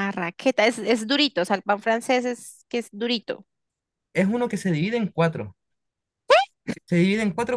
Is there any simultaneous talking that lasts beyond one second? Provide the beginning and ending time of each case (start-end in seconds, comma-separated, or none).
none